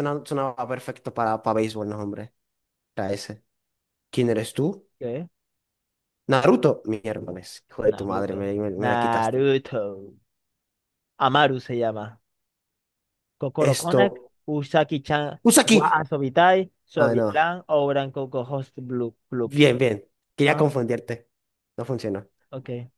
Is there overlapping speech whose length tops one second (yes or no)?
yes